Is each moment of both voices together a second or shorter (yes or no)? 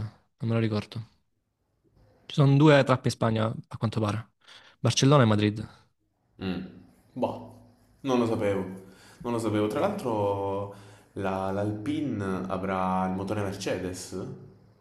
yes